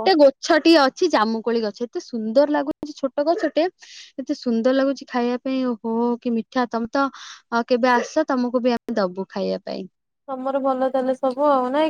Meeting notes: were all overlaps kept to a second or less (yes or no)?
yes